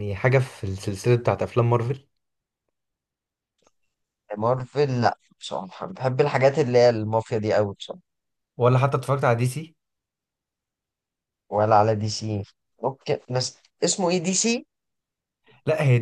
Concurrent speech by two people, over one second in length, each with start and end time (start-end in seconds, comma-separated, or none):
none